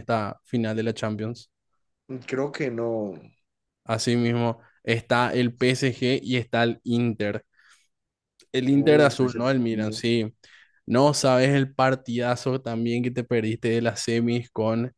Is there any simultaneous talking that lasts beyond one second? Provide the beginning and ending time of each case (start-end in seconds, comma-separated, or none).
8.7-10.0